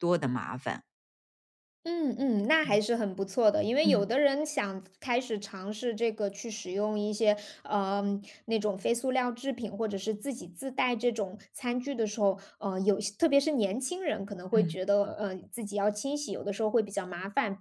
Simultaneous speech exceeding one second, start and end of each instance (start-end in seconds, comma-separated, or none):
none